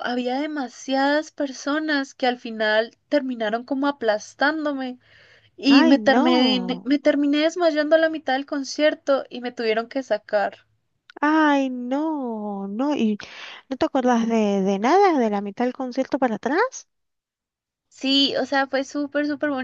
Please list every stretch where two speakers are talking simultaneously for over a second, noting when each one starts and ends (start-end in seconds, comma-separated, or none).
5.7-6.9